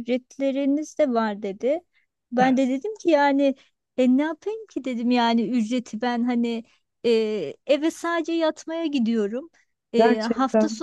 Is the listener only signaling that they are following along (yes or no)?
yes